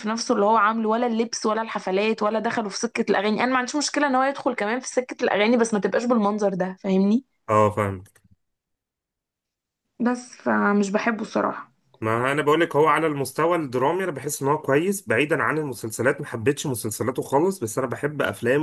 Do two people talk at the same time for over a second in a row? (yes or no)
no